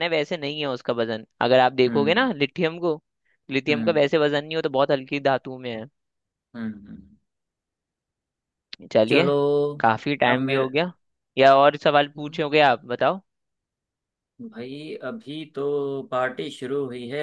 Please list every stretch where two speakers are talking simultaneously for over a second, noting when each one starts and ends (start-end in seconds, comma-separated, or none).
none